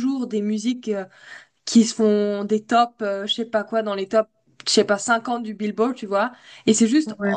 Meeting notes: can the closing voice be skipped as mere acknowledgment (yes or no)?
yes